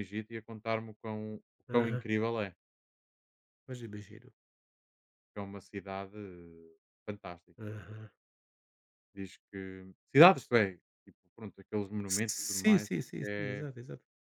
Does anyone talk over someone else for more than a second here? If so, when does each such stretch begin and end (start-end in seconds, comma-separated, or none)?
12.1-13.7